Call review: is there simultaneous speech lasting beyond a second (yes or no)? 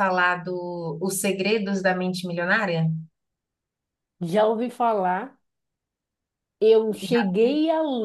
no